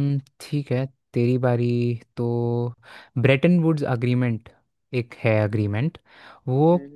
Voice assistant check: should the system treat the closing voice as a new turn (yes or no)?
no